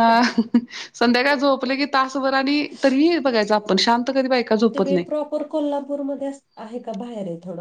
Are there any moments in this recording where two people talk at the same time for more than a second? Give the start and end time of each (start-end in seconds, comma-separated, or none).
none